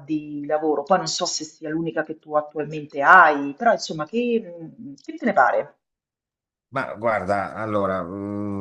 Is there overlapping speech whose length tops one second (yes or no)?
no